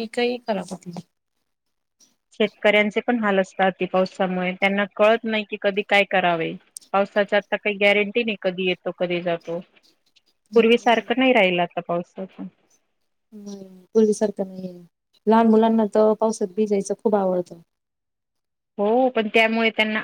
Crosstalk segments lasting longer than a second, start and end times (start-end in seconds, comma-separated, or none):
none